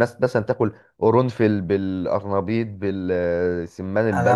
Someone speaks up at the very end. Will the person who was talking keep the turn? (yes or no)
no